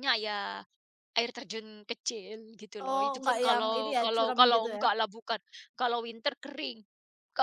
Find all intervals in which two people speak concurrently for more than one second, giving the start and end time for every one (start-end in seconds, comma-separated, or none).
2.9-4.8